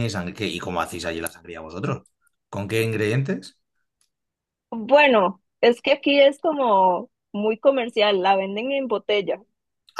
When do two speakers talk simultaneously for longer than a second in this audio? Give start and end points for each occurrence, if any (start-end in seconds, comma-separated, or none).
none